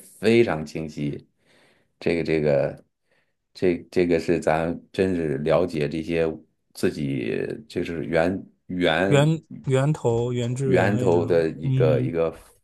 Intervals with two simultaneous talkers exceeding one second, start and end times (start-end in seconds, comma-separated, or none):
10.6-12.1